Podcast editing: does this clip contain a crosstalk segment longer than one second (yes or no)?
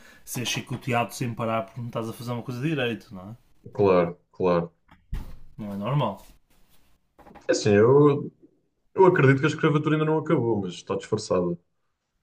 no